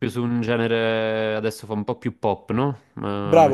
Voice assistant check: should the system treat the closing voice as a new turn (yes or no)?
yes